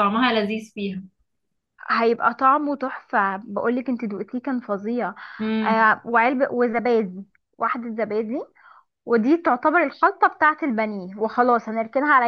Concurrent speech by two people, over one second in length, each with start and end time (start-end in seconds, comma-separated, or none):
none